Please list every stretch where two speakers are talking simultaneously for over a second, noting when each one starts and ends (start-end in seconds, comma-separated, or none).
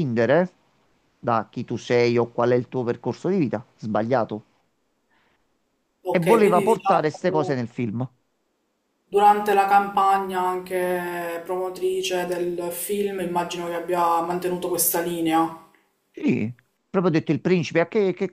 6.1-7.7